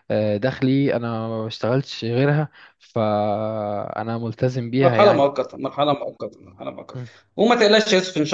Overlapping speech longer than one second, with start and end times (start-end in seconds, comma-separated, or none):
none